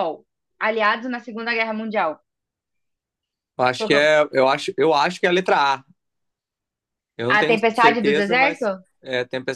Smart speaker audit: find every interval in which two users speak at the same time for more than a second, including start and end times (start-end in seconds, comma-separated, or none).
7.3-8.7